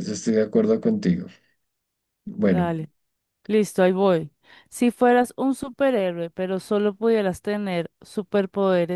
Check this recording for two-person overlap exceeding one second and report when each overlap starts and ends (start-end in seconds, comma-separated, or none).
none